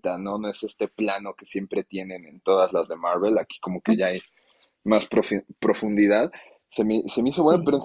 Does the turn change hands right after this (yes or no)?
no